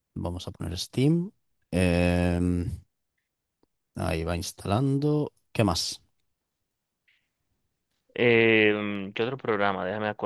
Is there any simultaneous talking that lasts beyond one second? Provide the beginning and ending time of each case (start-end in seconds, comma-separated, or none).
none